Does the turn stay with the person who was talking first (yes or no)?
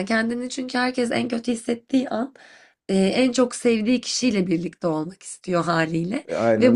yes